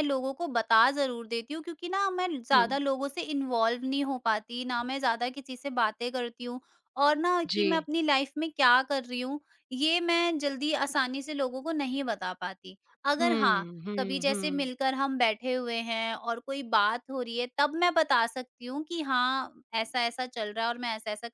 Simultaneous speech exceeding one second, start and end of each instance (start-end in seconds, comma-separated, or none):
13.2-14.7